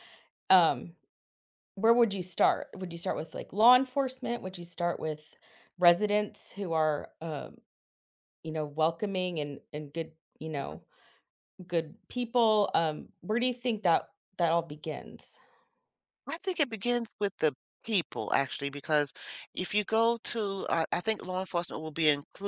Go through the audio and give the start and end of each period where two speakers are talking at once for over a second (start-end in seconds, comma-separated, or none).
none